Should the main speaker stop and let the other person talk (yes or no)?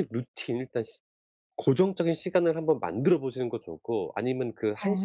no